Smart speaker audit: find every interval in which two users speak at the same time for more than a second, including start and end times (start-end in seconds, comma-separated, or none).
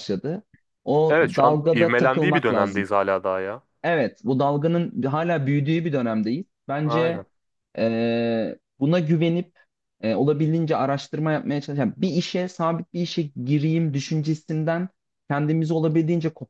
1.1-2.9